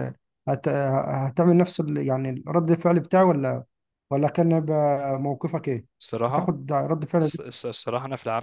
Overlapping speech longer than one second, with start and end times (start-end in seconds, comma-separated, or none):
none